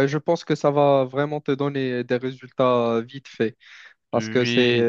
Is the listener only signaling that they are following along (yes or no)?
yes